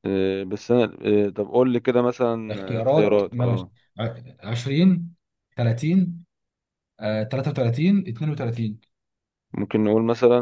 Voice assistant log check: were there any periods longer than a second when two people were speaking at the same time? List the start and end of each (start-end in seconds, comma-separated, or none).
2.5-3.7